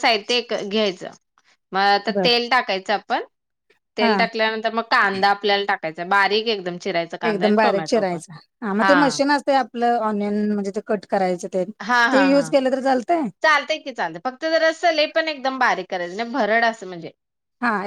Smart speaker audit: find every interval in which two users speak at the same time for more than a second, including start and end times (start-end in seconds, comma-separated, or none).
none